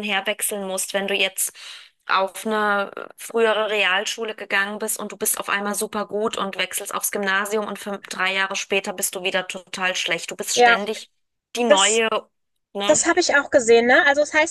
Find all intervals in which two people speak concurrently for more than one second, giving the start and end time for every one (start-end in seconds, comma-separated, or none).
none